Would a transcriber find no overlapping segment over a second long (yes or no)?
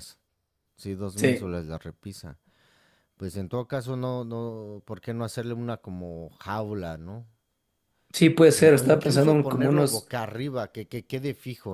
no